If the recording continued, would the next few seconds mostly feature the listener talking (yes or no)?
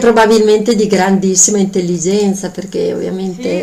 yes